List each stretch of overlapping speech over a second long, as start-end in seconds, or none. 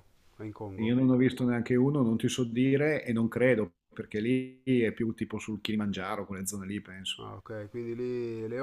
none